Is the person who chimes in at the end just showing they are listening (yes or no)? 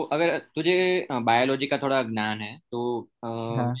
yes